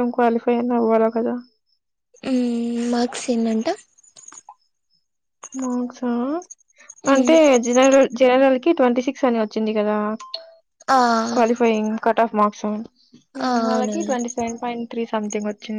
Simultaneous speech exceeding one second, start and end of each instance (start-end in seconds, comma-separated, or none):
none